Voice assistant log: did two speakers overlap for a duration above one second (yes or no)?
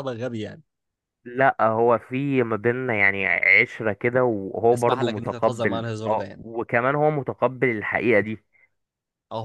yes